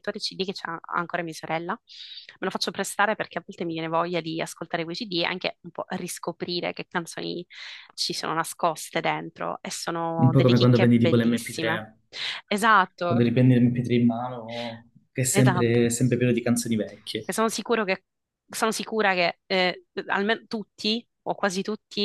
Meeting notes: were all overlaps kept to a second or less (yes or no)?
no